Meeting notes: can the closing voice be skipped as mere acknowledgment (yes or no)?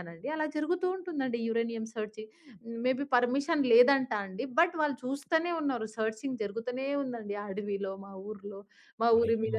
yes